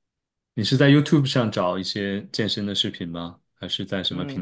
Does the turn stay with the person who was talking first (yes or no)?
no